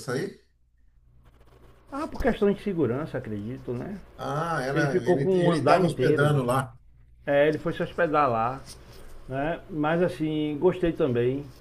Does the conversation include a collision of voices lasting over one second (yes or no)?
yes